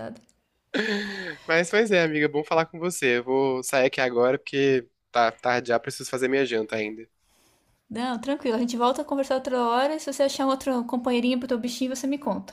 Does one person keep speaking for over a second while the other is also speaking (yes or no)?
no